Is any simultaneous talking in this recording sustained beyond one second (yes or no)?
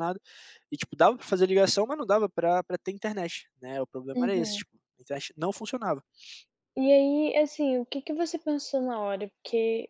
no